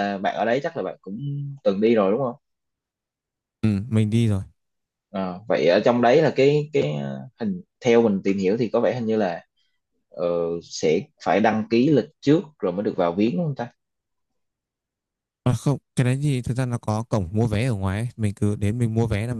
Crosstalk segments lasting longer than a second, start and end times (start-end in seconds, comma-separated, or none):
none